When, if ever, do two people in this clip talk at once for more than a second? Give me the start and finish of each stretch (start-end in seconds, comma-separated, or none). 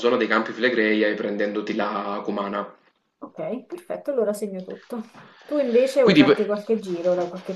none